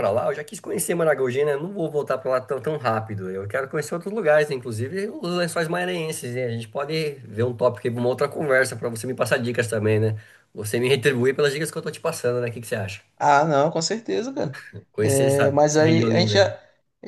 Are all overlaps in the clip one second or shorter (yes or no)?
no